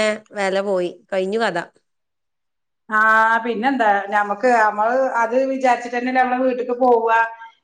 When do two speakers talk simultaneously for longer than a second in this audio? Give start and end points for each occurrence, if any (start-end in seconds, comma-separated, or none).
none